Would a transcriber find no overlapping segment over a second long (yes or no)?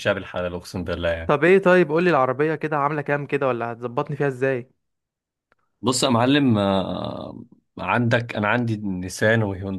yes